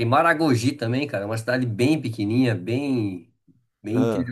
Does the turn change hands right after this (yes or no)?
no